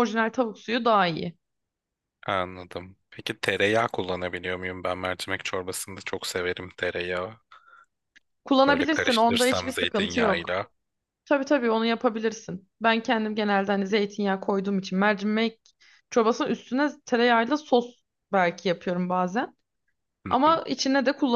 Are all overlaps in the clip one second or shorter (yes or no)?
no